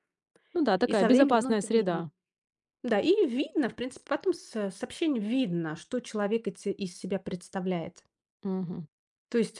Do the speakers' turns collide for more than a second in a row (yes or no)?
yes